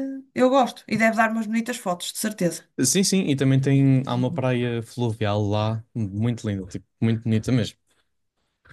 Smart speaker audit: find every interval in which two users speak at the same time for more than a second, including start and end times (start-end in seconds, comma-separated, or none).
none